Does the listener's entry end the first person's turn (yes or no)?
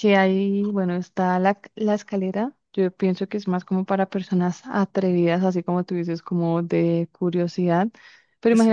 no